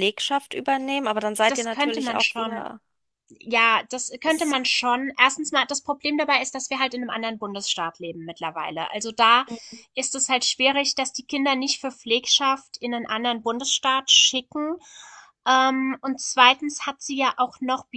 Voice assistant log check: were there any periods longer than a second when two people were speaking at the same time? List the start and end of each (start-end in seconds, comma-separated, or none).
1.5-2.7